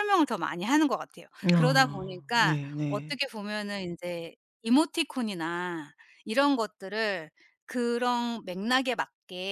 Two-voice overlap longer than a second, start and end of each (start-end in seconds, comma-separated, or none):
1.5-3.2